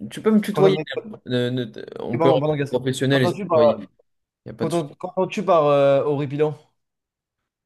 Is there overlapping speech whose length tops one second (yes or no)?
yes